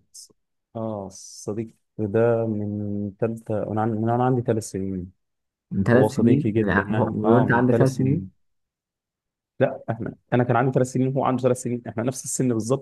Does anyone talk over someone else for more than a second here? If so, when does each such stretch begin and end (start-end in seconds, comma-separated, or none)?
5.9-8.3